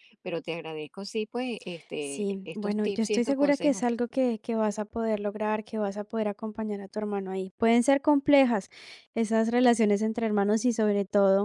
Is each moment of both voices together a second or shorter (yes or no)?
no